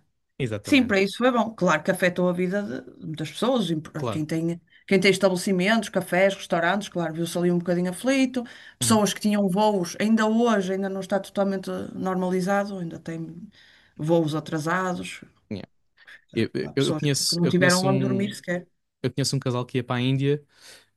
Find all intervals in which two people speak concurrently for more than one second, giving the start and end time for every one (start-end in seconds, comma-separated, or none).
16.6-18.4